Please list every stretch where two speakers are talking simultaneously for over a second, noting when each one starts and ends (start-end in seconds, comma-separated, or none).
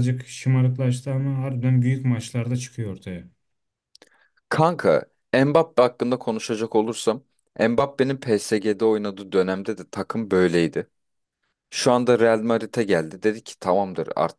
none